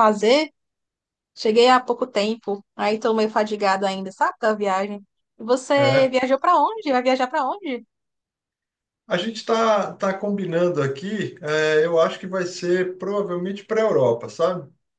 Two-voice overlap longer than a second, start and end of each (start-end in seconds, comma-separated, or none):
none